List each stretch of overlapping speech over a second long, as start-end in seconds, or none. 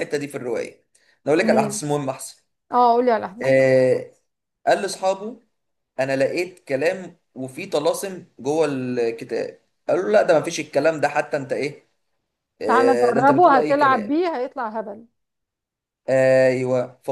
12.7-14.1